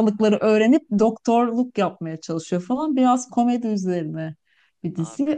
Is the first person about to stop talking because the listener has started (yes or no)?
no